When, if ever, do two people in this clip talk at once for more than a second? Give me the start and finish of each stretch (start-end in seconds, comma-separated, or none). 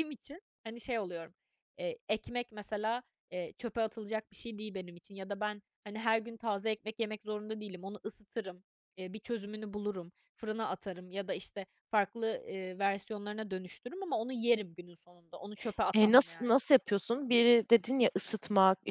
none